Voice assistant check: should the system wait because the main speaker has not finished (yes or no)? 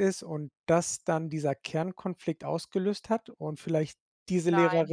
no